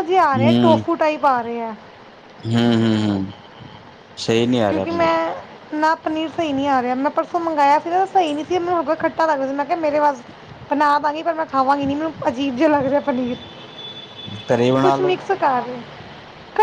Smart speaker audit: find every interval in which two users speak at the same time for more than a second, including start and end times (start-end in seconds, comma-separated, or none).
none